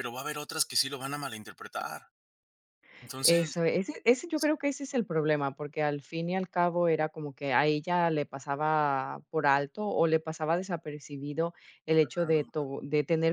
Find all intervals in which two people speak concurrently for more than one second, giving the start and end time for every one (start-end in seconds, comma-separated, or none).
none